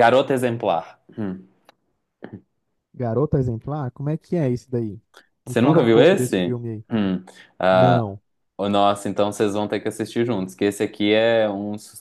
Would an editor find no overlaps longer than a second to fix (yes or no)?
no